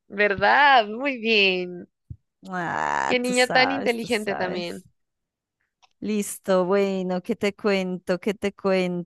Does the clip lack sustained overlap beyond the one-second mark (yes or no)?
no